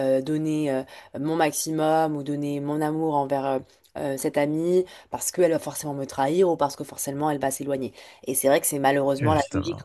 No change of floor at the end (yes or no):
yes